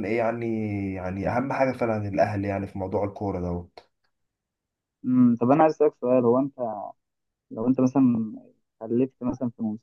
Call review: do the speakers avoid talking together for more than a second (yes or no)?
yes